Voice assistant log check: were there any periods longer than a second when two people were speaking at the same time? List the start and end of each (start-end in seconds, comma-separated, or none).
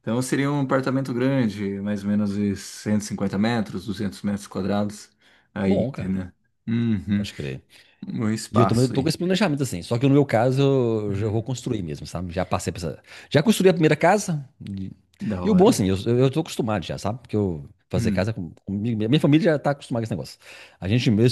none